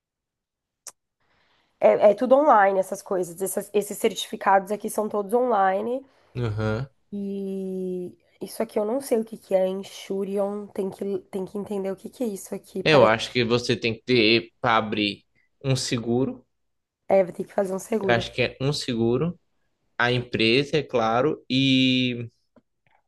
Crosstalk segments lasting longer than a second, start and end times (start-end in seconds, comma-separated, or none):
none